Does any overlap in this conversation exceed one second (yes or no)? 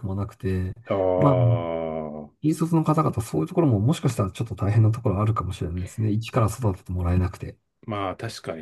no